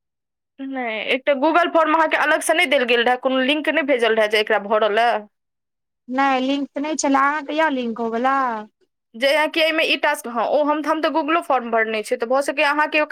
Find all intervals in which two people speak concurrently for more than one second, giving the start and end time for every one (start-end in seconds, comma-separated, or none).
none